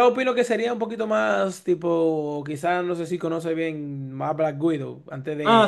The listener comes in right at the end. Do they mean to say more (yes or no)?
yes